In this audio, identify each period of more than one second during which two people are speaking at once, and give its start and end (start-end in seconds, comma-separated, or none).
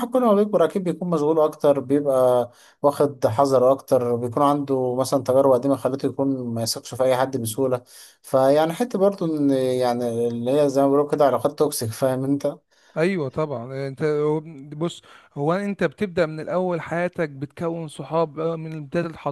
none